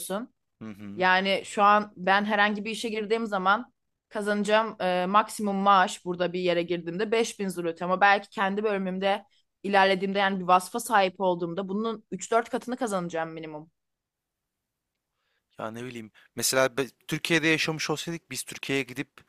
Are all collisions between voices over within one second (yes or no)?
yes